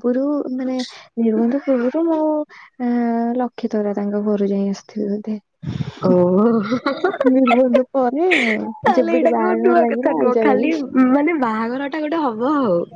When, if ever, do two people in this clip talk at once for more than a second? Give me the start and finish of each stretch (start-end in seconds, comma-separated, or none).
9.0-10.7